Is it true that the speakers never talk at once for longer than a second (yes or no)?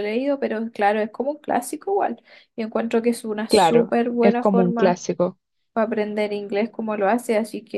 no